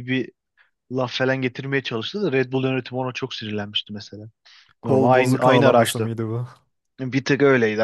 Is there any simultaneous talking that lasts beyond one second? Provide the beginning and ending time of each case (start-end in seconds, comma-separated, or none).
4.8-6.1